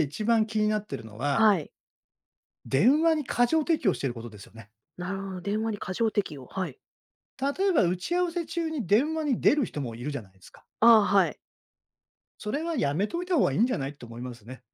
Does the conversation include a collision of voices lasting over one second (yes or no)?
no